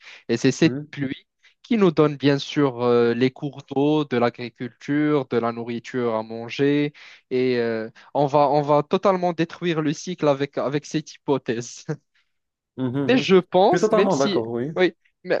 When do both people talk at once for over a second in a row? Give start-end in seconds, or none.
13.1-14.7